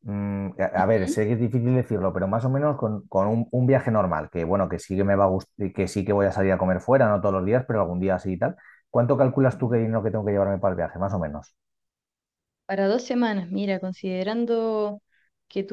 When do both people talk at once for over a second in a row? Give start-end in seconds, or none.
none